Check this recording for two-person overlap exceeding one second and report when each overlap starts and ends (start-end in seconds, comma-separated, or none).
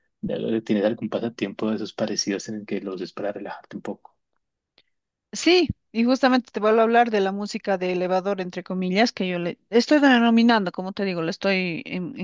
none